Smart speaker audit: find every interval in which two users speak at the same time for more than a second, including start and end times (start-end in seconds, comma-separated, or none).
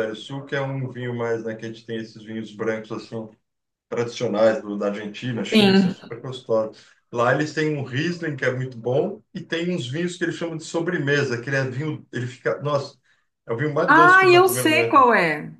13.9-15.1